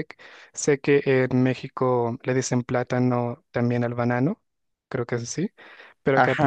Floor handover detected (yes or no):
no